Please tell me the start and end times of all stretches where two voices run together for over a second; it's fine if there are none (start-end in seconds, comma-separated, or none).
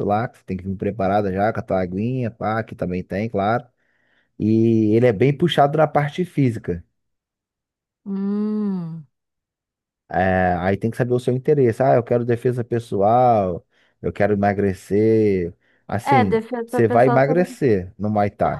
16.1-17.5